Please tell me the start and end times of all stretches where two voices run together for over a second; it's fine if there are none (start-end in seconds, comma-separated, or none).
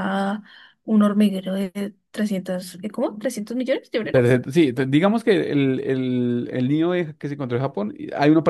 none